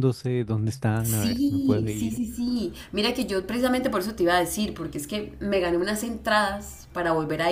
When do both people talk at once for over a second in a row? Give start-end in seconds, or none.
1.0-2.2